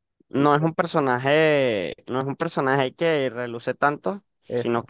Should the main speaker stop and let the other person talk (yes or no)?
no